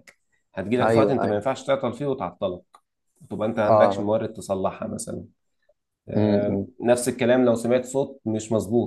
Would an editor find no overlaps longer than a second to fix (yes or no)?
yes